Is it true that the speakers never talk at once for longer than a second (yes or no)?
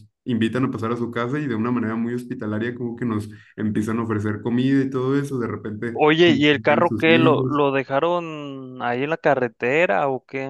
no